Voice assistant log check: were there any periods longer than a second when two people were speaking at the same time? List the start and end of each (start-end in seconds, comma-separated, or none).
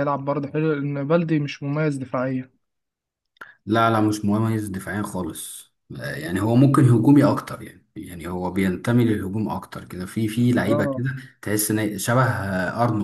none